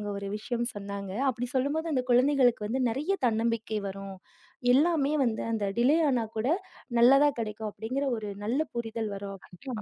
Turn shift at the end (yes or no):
yes